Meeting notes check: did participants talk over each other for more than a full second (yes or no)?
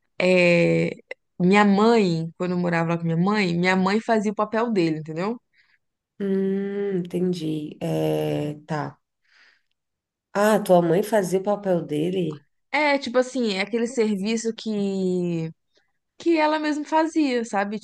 no